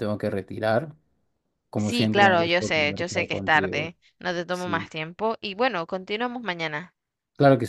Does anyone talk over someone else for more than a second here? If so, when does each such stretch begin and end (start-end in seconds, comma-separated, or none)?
1.8-3.9